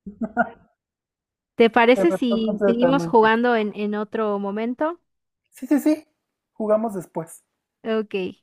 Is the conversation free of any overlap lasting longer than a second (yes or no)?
no